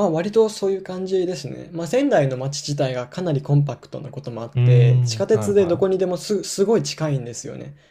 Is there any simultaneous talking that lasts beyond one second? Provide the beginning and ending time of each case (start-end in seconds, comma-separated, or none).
4.5-6.1